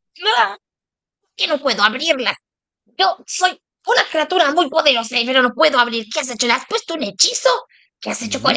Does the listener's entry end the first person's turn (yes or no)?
yes